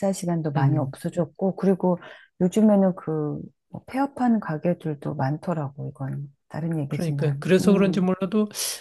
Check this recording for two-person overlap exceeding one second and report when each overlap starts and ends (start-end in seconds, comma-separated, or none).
6.9-8.1